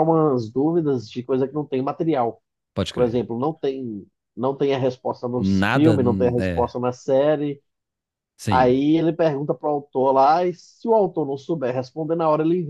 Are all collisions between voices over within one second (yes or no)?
no